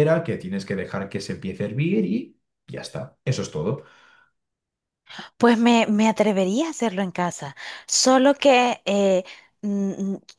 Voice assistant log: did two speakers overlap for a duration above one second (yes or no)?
no